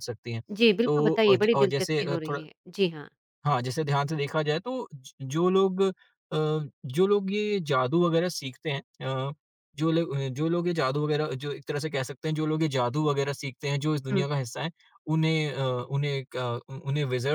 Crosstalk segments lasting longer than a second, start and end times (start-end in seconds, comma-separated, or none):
0.8-2.4